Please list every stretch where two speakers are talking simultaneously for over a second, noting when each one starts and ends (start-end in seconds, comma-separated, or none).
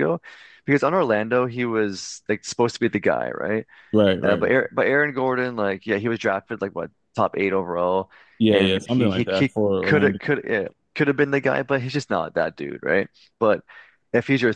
8.5-10.2